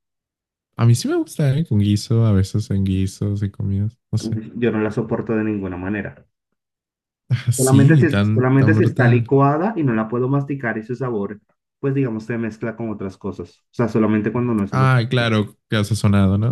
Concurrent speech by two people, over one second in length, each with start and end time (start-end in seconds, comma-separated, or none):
7.5-9.3